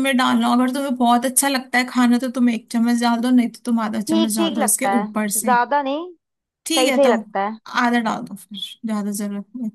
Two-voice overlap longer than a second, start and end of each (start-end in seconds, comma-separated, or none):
4.1-5.5